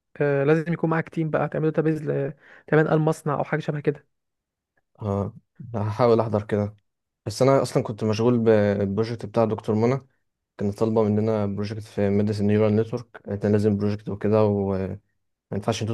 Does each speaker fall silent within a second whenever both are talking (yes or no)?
yes